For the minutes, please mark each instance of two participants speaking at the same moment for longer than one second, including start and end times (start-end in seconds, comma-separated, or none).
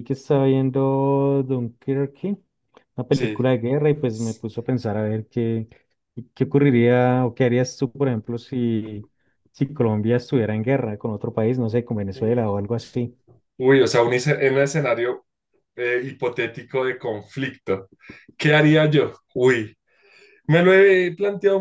none